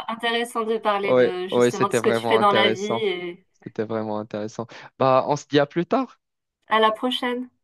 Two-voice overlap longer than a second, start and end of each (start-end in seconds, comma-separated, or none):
1.1-3.1